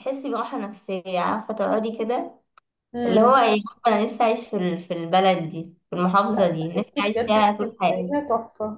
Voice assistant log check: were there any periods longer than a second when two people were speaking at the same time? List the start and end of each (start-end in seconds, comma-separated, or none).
6.3-8.2